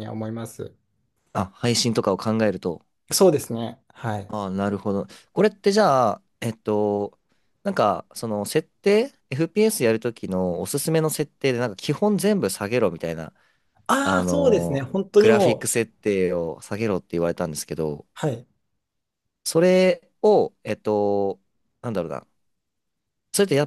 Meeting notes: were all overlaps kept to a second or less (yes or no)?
no